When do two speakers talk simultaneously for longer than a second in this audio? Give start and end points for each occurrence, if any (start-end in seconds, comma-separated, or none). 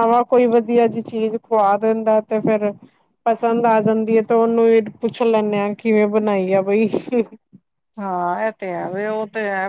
none